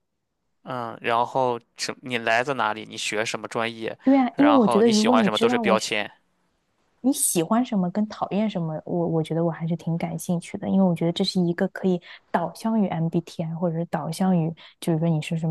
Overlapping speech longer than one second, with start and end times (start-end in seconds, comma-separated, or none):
4.3-6.0